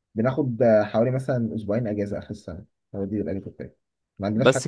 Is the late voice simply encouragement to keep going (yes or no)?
yes